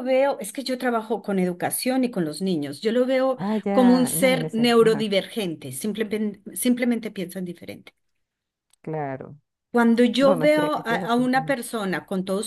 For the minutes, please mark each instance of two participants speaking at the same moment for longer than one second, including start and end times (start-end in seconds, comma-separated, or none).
3.4-5.1, 10.2-11.6